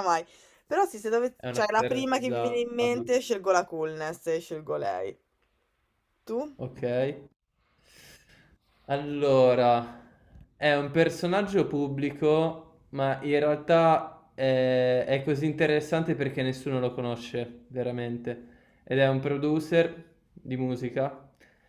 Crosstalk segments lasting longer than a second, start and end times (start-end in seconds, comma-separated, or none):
1.4-3.2